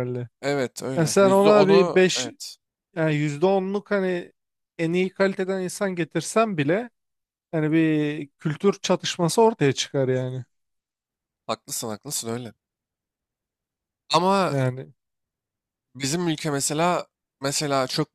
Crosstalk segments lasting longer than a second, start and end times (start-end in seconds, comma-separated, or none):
1.0-2.3